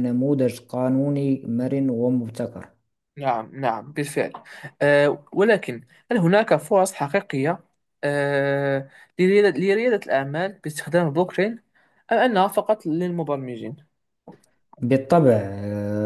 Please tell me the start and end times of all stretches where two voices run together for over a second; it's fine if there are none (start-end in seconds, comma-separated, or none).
none